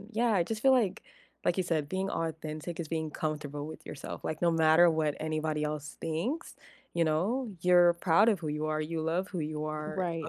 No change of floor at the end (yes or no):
yes